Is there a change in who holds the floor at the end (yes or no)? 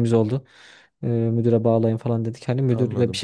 no